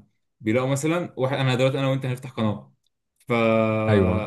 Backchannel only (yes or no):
yes